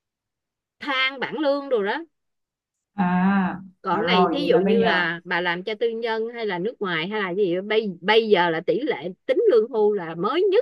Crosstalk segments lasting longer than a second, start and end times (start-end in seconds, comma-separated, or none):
3.8-5.1